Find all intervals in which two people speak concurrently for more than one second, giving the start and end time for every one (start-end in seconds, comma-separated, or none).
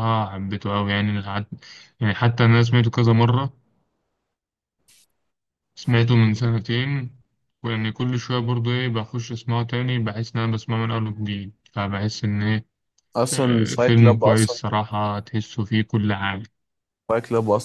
13.3-14.6